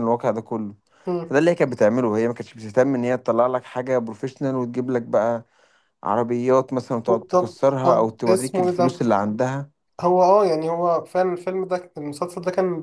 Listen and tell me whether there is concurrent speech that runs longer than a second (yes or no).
yes